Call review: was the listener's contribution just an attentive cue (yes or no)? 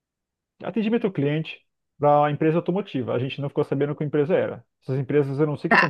yes